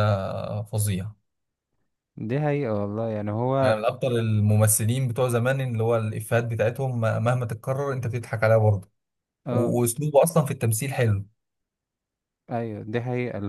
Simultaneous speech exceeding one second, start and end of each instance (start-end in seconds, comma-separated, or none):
none